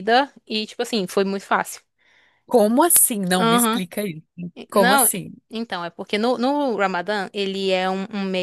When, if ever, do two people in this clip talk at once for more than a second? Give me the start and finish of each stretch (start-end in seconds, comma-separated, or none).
none